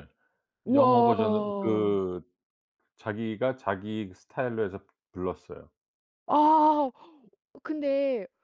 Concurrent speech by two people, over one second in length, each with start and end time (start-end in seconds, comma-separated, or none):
0.7-2.0